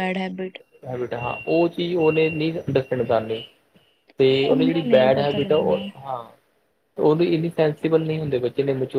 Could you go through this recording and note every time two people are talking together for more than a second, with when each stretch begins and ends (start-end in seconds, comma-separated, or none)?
4.5-5.8